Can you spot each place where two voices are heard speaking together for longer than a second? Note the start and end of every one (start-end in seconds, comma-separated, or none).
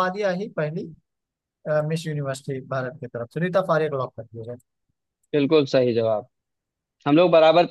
none